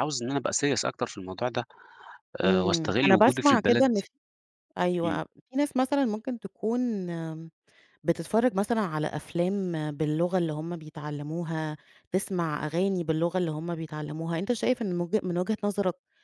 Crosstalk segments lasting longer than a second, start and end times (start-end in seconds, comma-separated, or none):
2.4-4.0